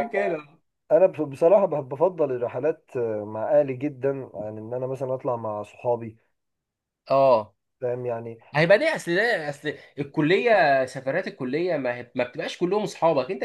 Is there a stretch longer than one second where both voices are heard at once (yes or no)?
no